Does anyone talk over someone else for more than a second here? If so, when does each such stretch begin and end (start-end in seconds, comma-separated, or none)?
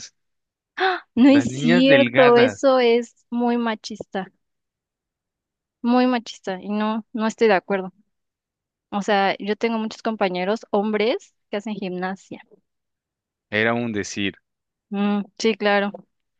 1.3-2.6